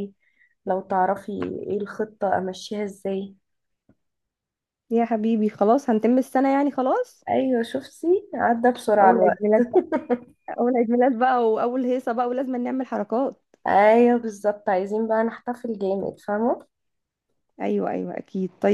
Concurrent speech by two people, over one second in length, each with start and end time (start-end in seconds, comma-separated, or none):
none